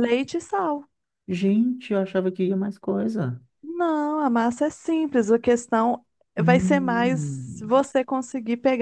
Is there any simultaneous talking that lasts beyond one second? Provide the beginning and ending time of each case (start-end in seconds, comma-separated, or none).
6.4-7.8